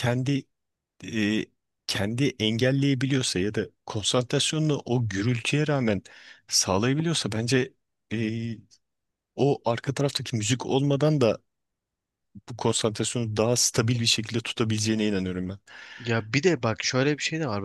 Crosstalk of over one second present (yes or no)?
no